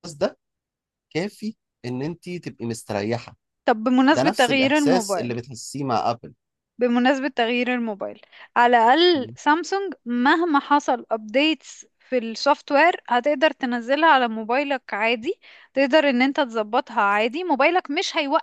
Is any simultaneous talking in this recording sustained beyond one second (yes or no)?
yes